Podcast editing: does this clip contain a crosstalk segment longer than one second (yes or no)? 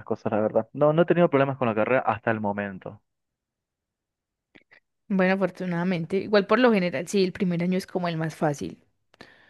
no